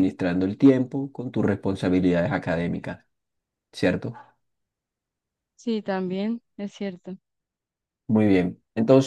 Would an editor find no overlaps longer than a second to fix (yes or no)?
yes